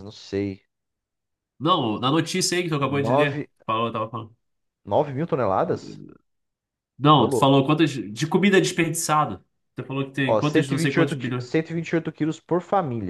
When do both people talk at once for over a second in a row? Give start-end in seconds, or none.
10.2-11.5